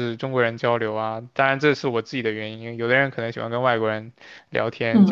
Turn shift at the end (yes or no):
yes